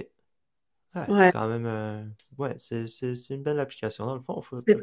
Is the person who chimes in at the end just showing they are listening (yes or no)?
no